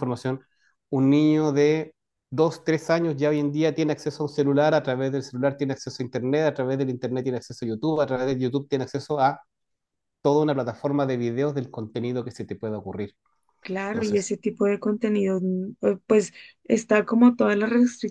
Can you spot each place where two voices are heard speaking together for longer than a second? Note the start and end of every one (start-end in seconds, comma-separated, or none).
none